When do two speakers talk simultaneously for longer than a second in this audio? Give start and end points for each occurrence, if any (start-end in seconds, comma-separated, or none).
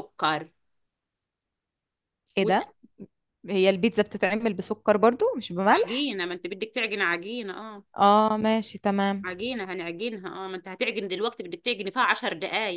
none